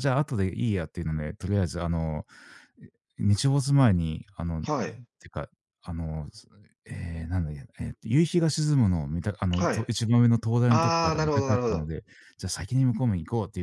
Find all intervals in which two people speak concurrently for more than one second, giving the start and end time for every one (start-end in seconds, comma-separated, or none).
10.7-11.9